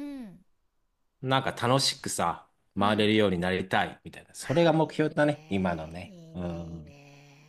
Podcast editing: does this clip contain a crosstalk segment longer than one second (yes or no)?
yes